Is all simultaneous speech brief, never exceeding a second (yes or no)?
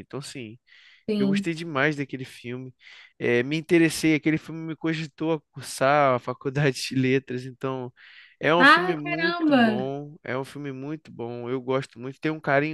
no